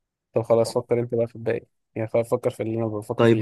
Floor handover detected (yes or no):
yes